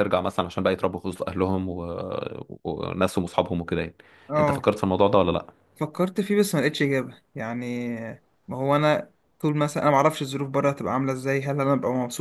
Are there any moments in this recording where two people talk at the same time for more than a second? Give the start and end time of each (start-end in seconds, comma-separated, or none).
none